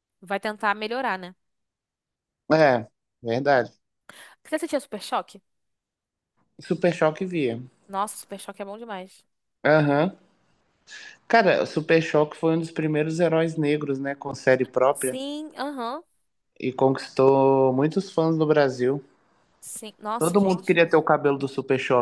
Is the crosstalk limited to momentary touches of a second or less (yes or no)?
yes